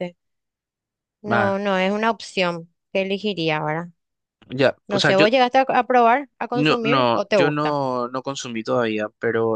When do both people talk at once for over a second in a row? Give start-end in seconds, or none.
6.5-7.8